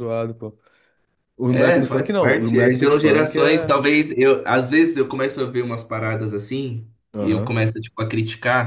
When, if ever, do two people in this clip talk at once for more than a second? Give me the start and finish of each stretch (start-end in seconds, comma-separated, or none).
1.5-3.7